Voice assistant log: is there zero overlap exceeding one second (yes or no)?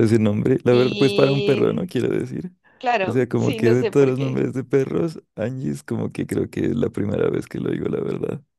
no